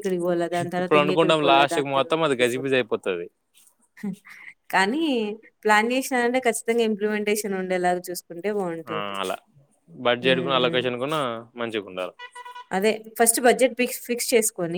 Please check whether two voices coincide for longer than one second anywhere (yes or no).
yes